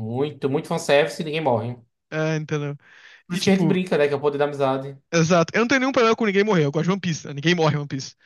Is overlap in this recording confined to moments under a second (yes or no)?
yes